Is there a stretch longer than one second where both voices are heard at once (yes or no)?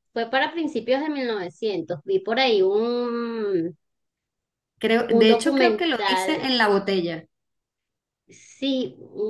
yes